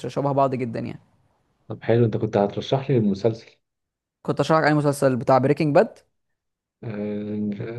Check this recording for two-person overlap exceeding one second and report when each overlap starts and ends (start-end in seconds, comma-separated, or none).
none